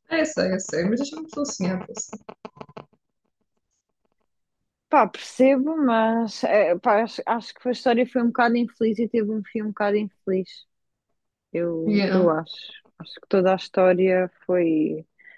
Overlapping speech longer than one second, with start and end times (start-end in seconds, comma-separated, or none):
none